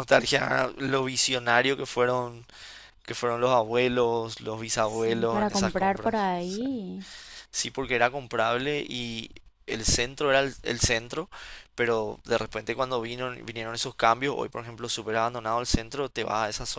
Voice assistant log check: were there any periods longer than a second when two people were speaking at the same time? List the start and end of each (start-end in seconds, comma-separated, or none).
4.8-6.6